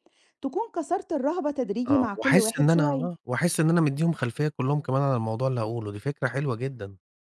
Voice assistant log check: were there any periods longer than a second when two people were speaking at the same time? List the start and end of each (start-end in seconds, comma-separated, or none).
1.9-3.1